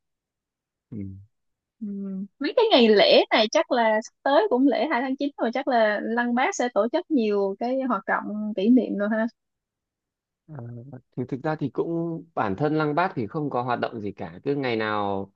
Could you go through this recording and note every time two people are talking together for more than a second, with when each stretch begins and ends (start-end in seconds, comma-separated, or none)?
none